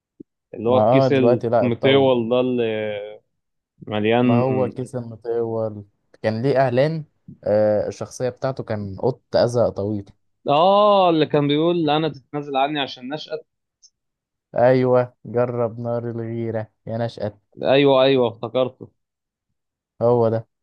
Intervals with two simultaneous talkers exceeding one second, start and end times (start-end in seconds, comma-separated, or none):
0.7-2.1